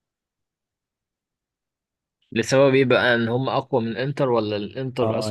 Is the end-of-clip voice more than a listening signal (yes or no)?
yes